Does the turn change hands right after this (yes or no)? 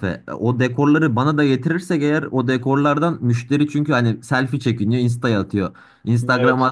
no